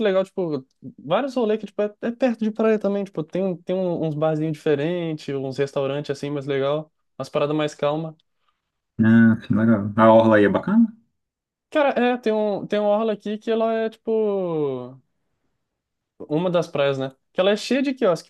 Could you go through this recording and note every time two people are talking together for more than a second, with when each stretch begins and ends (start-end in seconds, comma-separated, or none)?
none